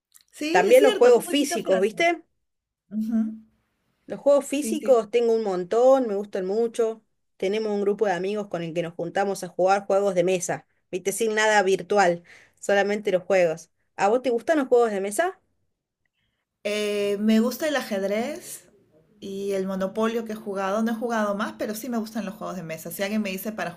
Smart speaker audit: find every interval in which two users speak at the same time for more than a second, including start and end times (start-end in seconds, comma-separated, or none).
0.5-1.9